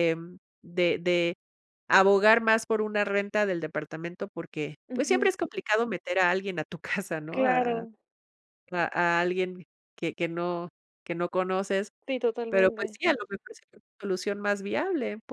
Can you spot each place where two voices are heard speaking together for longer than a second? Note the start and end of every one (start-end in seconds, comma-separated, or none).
none